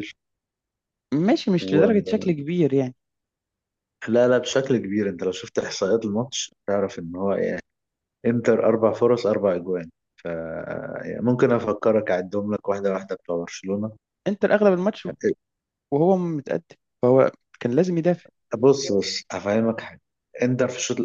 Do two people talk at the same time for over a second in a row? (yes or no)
no